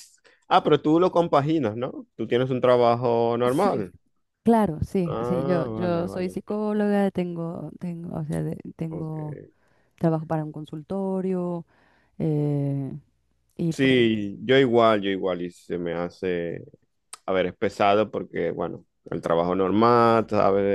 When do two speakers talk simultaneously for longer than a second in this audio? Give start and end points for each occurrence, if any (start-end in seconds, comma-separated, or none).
5.1-6.4